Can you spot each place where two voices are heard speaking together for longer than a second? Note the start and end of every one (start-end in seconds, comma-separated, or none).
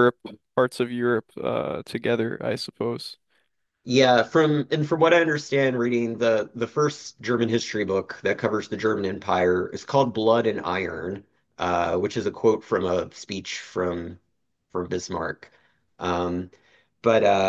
none